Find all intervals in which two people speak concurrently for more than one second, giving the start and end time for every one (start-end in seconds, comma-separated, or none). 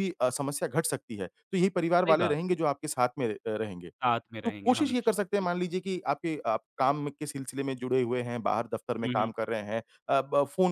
4.4-5.7